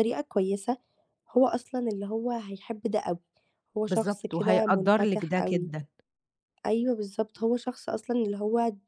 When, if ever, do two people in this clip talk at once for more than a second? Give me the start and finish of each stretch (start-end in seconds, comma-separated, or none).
3.9-5.7